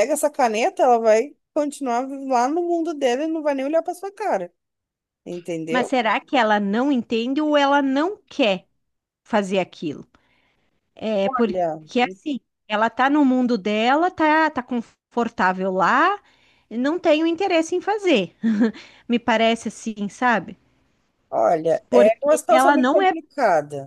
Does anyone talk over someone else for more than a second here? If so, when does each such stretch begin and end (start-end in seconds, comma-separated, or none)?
21.9-23.1